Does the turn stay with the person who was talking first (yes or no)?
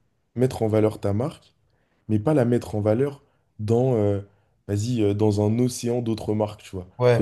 yes